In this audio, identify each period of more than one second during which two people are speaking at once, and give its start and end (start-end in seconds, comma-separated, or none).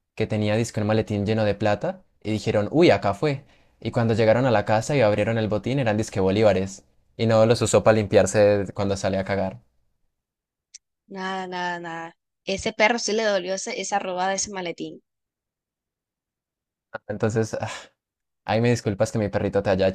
none